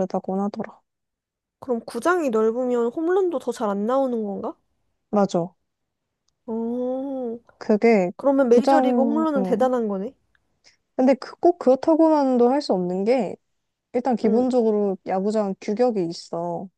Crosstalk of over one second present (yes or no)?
yes